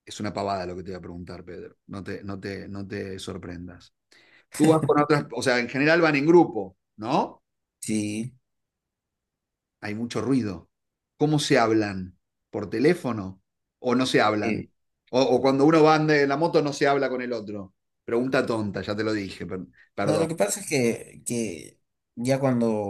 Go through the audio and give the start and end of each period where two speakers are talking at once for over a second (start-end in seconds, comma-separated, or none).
none